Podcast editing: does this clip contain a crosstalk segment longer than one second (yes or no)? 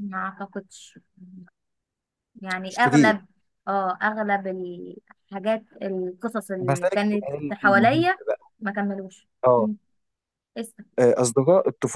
yes